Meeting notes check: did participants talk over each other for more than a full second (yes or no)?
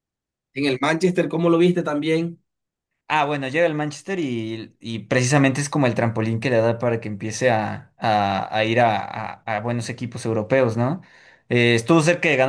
no